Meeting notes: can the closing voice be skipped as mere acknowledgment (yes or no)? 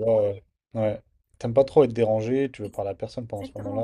no